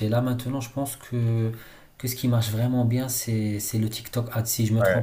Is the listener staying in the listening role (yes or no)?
no